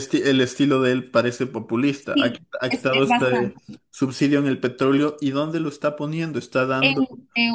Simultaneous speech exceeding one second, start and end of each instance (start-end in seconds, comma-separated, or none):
2.1-3.8